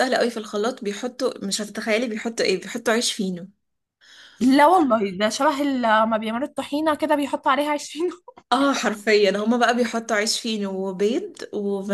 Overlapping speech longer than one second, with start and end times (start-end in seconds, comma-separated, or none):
none